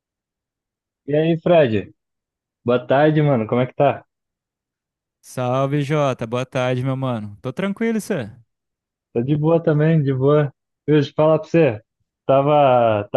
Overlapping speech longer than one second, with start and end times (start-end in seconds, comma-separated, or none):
none